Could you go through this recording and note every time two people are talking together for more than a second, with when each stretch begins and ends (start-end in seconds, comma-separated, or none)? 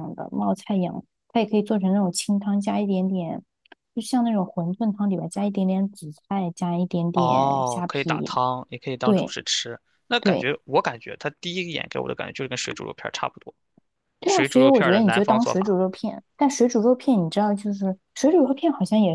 7.1-8.4, 14.2-15.8